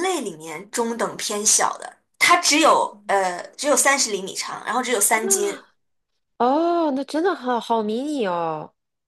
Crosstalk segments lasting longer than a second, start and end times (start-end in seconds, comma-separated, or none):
none